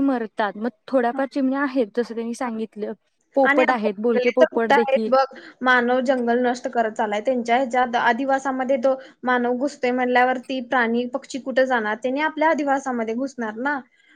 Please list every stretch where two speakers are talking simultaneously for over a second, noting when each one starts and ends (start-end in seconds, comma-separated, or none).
3.5-5.1